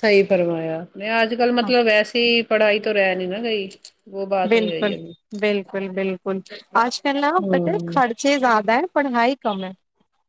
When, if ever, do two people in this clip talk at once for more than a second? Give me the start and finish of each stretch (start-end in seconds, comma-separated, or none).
none